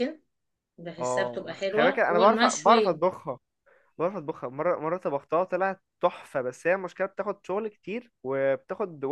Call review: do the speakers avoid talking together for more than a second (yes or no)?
no